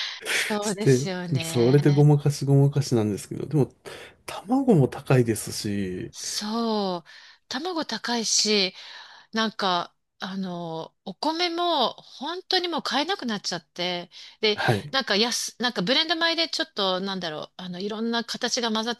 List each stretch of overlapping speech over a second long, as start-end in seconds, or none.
0.6-2.1